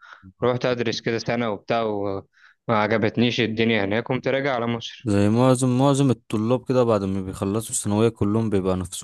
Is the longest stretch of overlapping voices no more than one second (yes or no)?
yes